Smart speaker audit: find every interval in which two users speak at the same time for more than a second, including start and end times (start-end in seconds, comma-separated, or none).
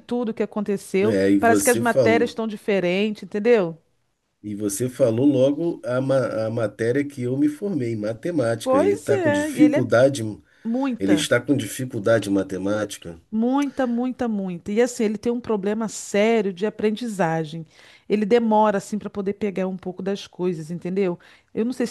1.0-2.3, 8.6-9.9